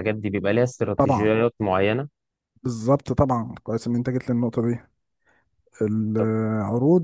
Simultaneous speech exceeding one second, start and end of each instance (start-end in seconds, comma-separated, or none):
none